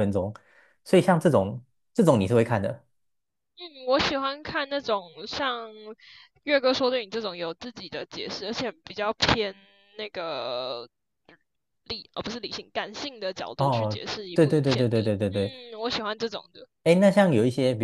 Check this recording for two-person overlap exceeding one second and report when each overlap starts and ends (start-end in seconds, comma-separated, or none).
13.6-15.0